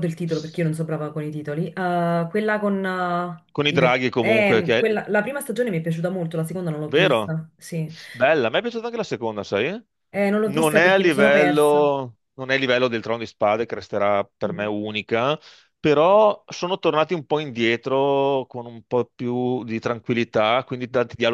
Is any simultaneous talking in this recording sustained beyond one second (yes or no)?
yes